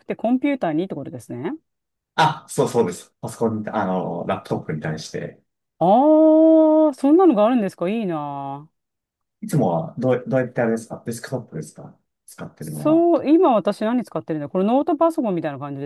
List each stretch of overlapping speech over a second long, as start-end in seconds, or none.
none